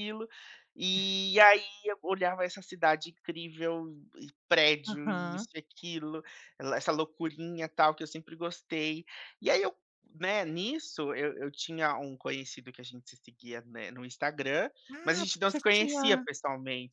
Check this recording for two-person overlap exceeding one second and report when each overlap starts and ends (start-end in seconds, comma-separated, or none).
14.9-16.2